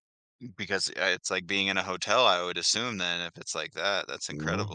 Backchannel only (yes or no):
no